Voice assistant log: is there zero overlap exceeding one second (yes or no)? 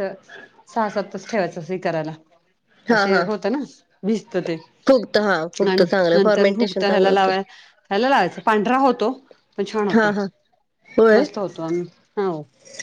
no